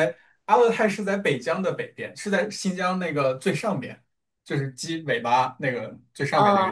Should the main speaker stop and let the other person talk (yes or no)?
no